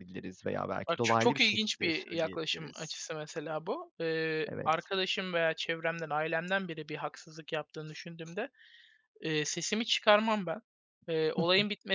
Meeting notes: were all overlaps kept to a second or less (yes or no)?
no